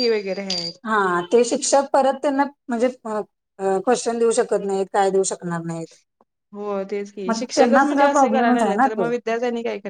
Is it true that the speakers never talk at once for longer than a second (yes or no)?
no